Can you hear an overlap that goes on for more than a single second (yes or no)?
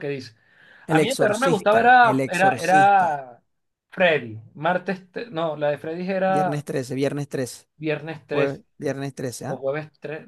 yes